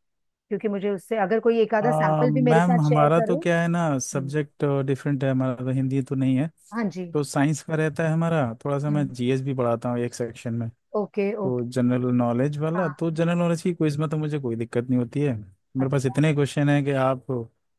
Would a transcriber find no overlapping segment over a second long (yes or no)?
no